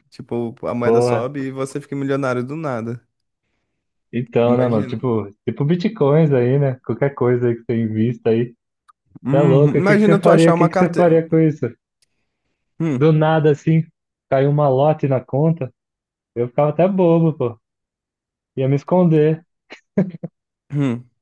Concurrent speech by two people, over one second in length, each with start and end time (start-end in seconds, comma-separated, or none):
9.3-11.2